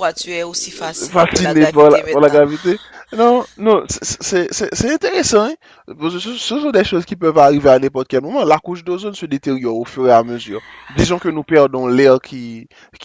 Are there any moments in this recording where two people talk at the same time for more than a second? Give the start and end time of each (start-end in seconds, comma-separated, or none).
1.1-2.4